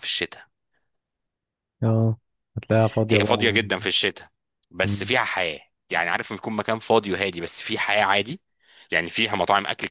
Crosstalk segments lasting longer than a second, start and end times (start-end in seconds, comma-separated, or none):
none